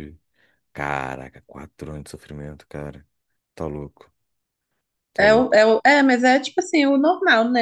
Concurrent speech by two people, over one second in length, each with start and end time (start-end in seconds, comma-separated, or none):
none